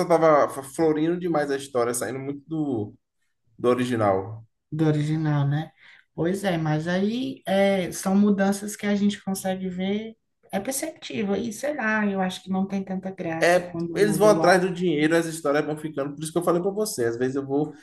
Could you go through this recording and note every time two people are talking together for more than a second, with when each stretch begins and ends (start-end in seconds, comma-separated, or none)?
13.4-14.7